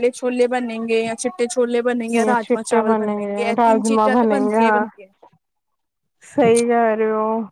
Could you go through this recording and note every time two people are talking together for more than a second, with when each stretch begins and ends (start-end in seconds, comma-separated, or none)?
3.6-4.9